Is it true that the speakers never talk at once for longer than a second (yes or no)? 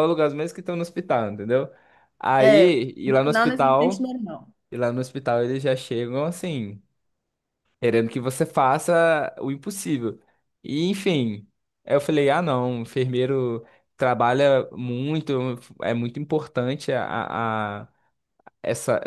no